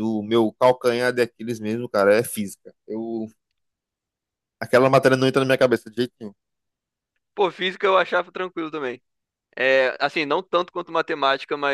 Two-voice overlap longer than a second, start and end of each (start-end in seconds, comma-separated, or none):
none